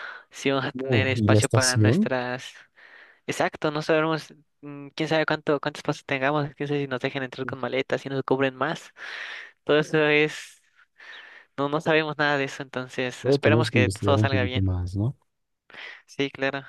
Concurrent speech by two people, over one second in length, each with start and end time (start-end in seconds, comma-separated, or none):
0.7-2.1, 13.2-14.6